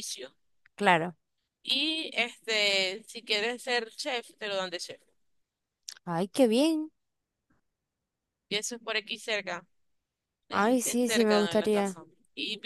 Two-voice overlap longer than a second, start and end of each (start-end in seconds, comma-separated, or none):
10.5-12.0